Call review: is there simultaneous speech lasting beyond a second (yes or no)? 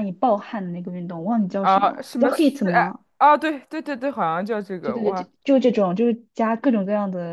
yes